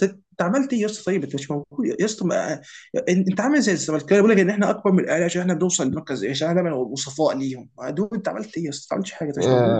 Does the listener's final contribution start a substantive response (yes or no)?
yes